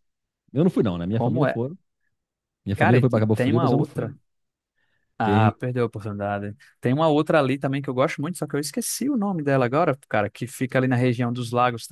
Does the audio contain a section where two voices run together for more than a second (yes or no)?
yes